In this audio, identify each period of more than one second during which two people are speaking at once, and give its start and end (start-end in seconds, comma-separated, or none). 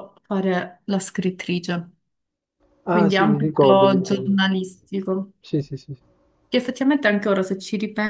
2.9-4.4